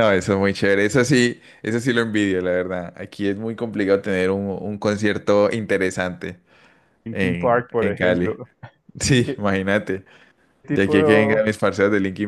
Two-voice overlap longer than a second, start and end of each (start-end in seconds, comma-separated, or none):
7.1-8.4